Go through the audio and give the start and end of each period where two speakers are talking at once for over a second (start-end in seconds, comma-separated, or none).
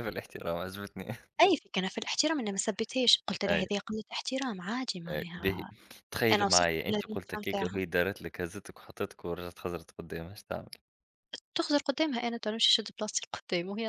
6.3-7.8